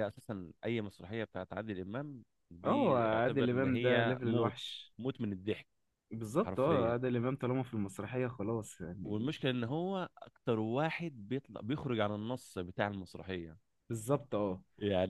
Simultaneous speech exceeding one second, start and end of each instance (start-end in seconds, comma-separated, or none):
2.6-4.6